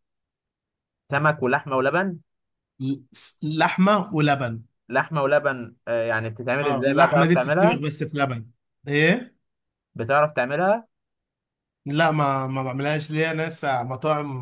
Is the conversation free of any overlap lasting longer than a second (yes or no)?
no